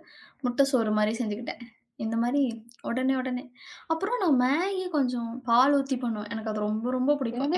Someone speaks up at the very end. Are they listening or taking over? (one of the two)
taking over